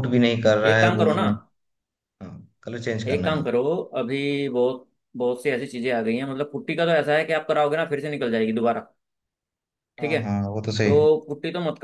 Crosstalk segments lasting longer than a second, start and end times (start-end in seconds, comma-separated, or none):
none